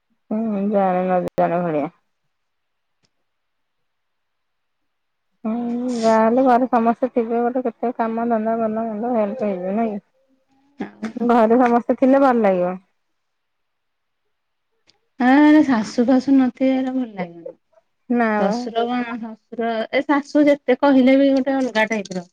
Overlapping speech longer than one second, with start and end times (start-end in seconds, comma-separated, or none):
none